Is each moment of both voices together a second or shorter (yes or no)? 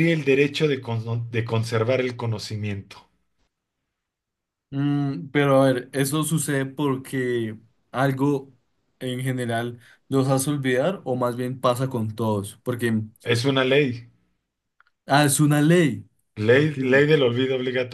yes